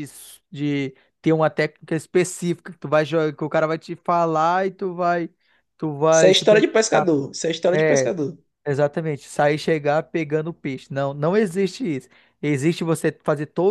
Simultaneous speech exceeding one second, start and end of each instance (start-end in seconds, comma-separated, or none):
none